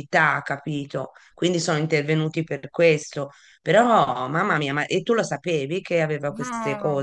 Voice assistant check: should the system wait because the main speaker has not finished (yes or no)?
no